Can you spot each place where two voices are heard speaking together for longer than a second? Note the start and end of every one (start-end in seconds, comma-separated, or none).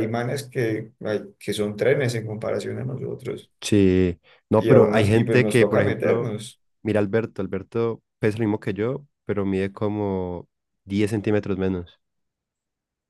4.5-6.3